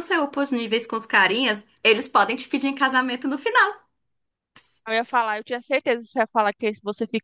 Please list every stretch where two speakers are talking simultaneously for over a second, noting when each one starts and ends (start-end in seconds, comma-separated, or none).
none